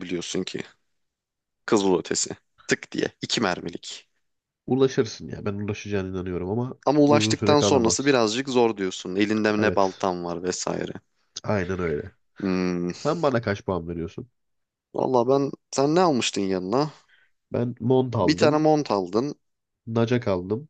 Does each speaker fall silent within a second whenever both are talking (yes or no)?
no